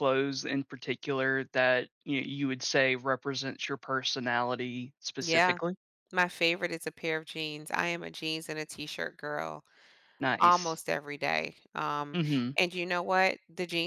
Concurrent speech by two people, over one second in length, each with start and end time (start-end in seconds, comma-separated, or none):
none